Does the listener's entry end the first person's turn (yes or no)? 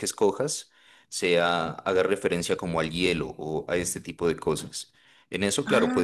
no